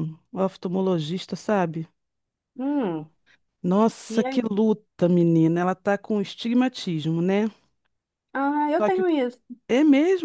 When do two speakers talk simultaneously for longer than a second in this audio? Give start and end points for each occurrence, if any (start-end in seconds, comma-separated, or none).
none